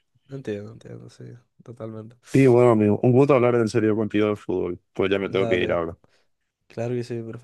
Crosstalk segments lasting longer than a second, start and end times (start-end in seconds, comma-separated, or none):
none